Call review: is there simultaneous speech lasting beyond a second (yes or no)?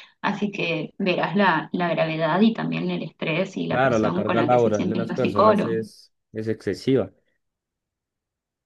yes